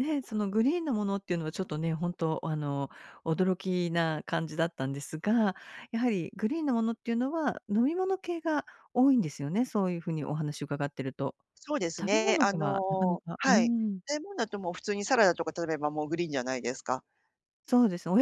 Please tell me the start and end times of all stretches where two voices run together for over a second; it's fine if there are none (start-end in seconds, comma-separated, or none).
12.0-14.0